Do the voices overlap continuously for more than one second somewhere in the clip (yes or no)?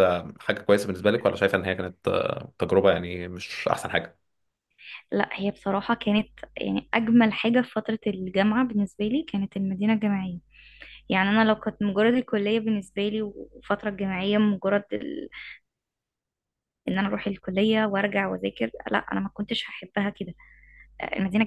no